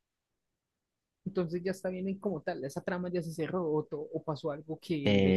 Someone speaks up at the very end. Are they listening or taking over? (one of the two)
taking over